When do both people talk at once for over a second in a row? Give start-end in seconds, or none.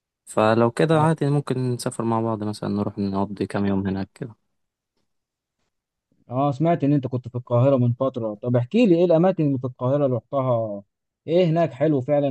none